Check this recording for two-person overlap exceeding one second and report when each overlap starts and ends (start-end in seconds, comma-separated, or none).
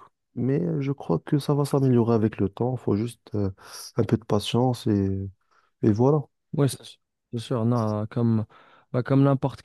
none